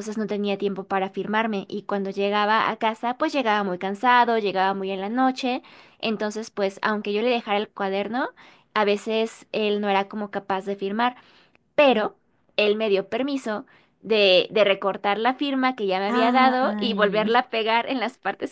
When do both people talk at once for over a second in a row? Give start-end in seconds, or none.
16.1-17.4